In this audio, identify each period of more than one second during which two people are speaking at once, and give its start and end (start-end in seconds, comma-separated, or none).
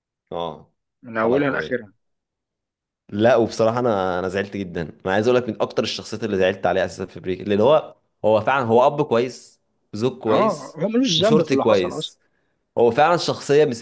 10.3-12.1